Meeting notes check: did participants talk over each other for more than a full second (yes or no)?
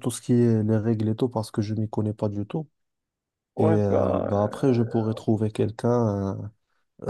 yes